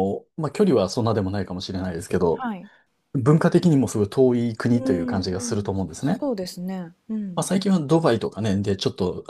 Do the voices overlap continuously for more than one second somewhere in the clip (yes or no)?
yes